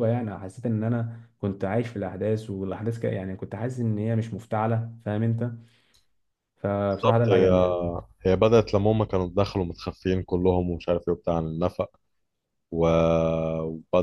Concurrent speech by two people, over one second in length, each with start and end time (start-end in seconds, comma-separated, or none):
none